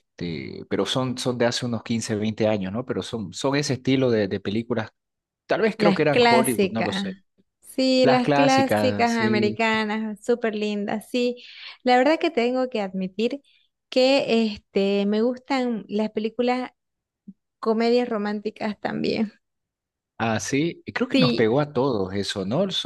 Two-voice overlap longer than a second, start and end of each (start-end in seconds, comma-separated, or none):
5.8-7.2, 8.0-9.6